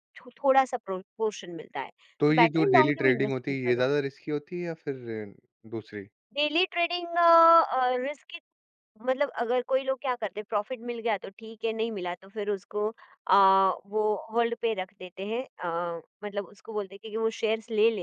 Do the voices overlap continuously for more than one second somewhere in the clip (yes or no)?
yes